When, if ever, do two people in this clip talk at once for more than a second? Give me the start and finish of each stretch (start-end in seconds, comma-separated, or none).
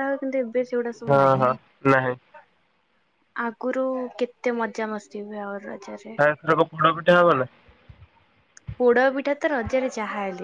none